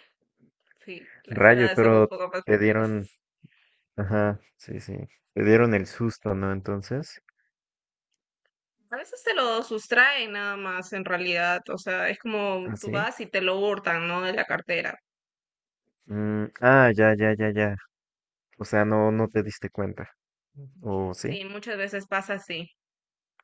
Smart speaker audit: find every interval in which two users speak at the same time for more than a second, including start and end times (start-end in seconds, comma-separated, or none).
1.3-3.1